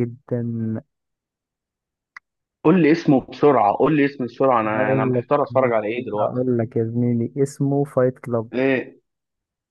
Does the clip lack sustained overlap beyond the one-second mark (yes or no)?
yes